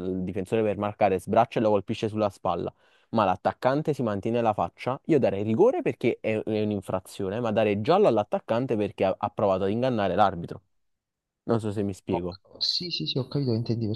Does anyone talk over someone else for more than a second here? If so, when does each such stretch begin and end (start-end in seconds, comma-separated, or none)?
none